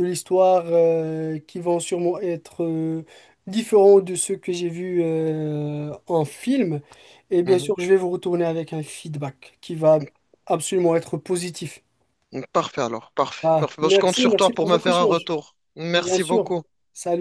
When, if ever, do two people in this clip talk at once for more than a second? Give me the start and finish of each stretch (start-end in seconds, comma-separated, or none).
13.4-15.3